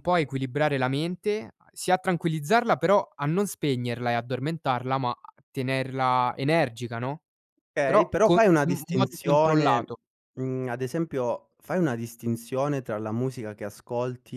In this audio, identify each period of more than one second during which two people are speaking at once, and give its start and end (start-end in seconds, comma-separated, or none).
7.8-9.9